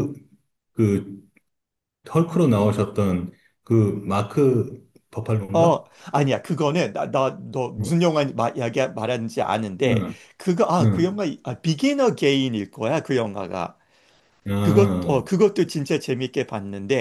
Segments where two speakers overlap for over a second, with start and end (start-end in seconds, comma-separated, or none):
none